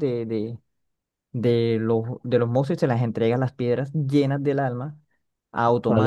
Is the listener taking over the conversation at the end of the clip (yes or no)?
yes